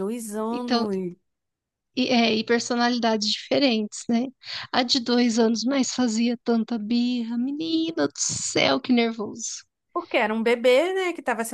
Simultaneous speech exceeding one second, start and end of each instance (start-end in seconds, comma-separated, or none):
none